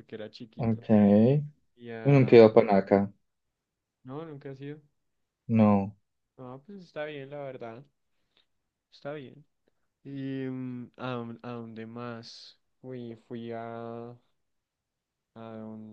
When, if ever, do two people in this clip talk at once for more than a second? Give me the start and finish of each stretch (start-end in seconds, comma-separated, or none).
none